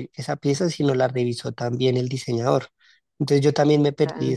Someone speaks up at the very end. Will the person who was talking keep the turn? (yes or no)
yes